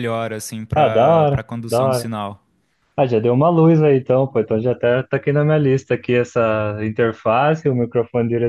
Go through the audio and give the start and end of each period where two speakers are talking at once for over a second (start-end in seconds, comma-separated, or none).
0.7-2.1